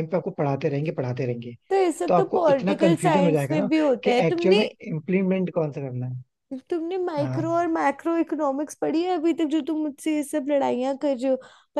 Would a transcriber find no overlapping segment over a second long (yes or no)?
no